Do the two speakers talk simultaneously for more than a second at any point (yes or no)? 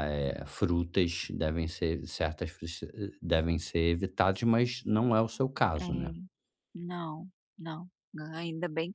no